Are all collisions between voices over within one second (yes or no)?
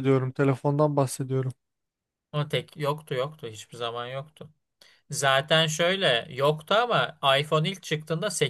yes